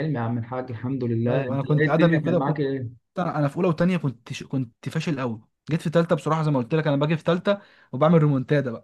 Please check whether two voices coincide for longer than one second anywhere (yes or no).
yes